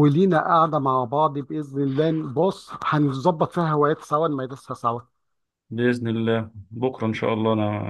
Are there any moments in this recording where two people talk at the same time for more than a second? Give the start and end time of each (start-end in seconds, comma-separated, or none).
none